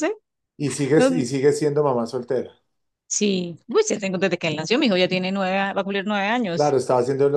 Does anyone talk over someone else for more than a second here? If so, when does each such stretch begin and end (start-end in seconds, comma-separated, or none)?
none